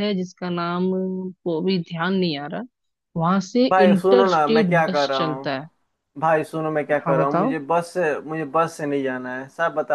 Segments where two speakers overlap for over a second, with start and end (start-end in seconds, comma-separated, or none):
3.7-5.5